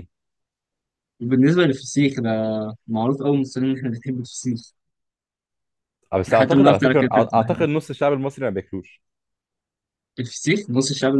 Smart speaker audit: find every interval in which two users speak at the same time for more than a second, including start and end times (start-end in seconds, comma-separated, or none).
6.3-7.7